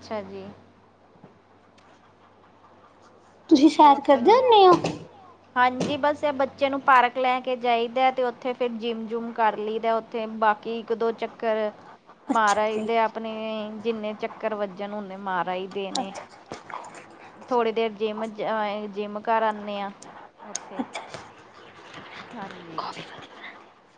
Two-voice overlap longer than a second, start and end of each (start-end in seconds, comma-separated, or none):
3.8-5.0